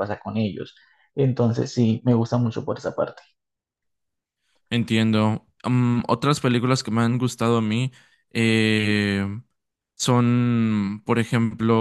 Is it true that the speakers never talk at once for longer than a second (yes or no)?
yes